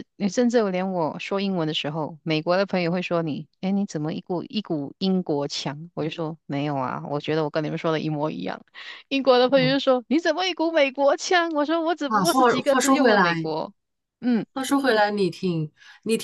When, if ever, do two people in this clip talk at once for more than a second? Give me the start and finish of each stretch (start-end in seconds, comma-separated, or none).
12.1-13.5